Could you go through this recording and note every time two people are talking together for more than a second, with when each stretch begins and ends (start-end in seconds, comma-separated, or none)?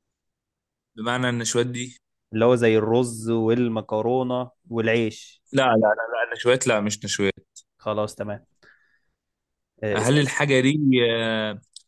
none